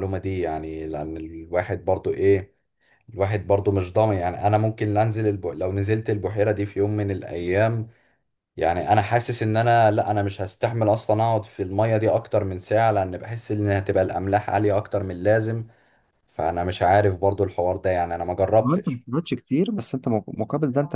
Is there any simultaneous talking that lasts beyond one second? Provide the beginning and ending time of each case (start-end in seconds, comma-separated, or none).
none